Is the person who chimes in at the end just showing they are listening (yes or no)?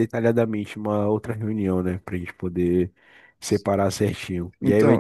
yes